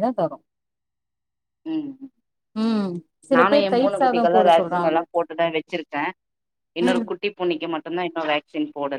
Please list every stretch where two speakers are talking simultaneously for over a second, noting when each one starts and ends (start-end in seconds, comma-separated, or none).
3.4-5.0